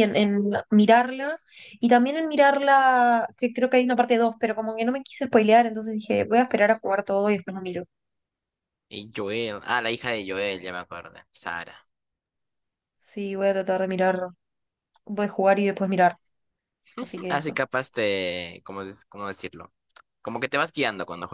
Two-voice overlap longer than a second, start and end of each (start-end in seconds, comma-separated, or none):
none